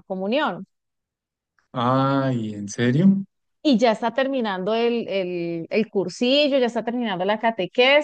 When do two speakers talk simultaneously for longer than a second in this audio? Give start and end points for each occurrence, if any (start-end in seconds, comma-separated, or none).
none